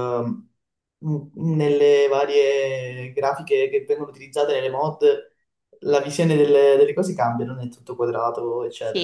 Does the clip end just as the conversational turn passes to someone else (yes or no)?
yes